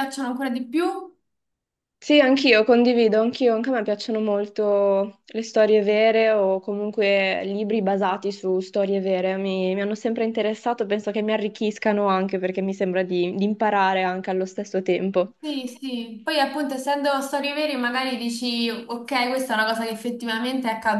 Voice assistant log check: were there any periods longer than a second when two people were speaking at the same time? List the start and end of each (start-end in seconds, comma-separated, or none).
none